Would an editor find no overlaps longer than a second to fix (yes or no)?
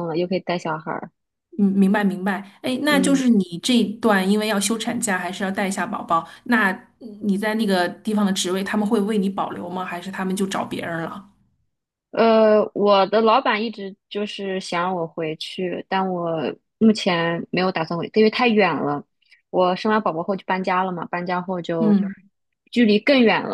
yes